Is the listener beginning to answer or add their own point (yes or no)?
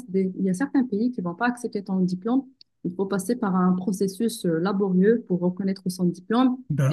no